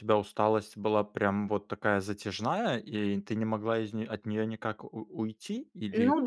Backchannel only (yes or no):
no